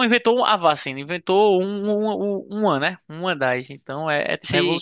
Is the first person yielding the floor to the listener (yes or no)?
yes